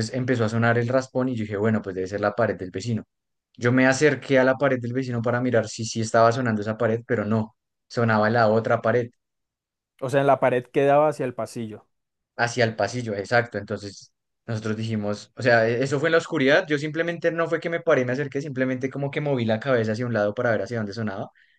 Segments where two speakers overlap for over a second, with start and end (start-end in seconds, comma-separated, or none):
none